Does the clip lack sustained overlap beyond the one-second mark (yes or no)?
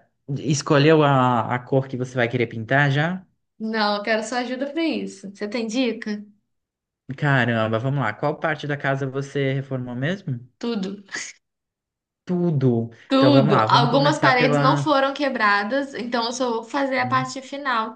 no